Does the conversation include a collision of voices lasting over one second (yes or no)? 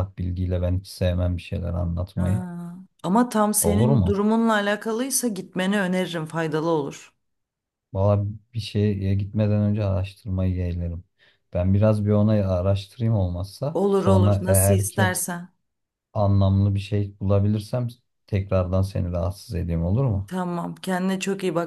yes